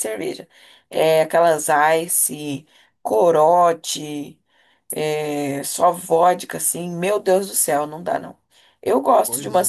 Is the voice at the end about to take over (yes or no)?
no